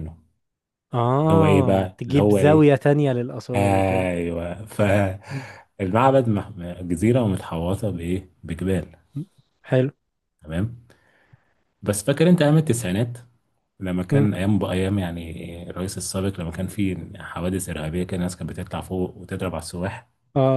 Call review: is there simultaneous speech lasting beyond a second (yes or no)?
yes